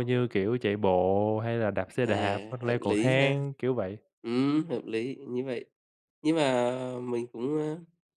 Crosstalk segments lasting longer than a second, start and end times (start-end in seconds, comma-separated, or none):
2.0-3.4